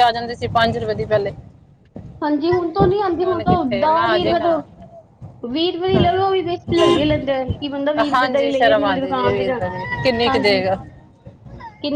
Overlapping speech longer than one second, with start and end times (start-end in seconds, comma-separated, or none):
8.1-9.6